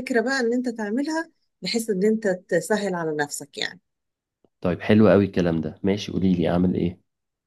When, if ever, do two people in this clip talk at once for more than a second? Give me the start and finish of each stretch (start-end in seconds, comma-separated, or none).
none